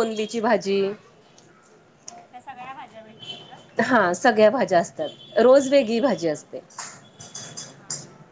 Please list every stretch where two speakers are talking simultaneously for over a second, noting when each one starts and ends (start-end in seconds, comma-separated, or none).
none